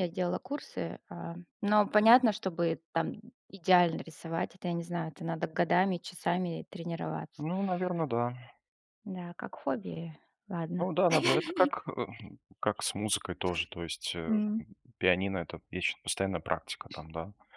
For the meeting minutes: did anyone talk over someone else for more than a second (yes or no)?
no